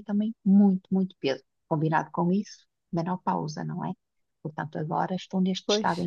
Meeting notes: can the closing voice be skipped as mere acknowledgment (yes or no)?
yes